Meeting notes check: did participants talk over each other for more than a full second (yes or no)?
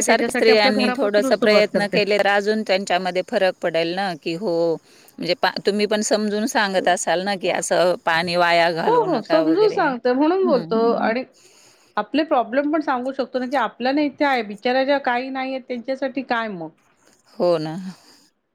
yes